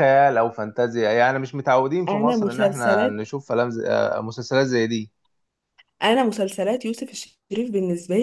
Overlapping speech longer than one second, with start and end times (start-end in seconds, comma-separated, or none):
2.1-3.3